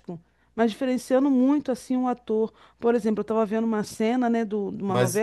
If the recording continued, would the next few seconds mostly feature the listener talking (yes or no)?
no